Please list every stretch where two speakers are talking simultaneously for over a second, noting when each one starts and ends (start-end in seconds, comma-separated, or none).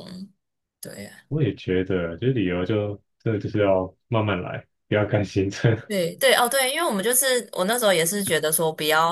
none